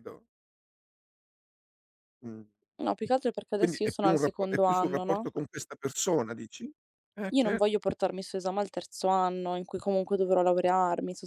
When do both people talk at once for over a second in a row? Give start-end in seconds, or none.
3.6-5.3